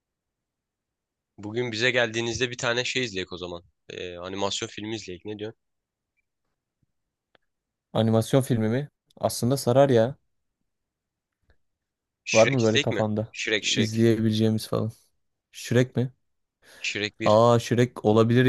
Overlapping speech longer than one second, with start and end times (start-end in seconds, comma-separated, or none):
12.3-14.0